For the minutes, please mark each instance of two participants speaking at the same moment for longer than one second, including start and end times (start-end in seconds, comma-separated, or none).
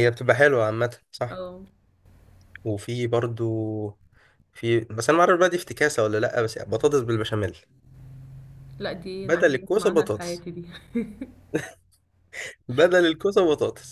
9.2-10.4